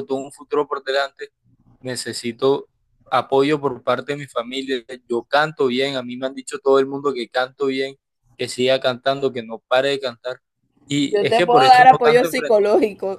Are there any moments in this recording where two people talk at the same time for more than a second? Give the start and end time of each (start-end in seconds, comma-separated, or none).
11.1-12.7